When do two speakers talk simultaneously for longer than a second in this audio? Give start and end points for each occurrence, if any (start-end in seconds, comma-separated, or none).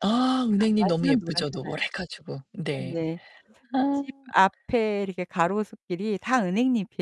0.5-1.7